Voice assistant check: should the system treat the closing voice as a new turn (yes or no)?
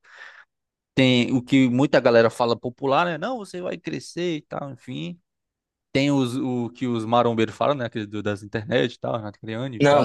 yes